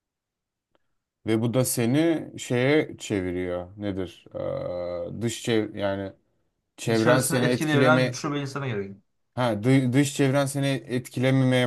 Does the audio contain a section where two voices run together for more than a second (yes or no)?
yes